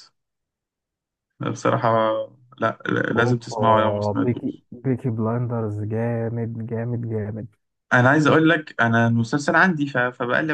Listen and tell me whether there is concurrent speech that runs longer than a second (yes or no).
yes